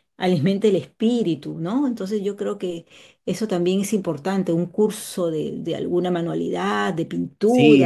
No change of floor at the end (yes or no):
no